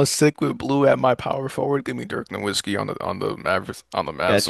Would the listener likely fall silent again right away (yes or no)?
no